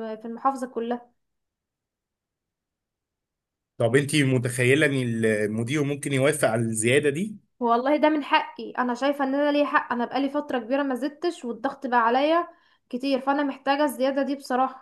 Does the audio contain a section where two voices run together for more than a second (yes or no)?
no